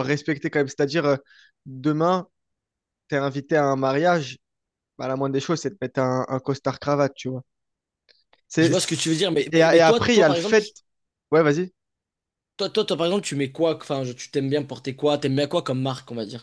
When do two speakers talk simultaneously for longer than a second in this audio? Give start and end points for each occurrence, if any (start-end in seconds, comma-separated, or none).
8.6-10.7